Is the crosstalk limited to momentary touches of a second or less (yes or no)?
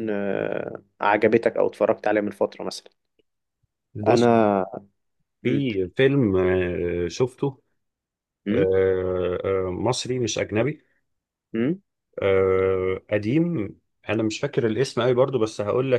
yes